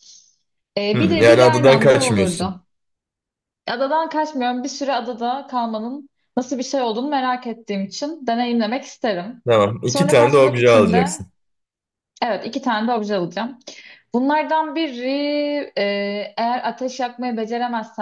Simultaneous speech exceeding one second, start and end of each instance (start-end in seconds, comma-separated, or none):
0.9-2.6, 9.8-11.2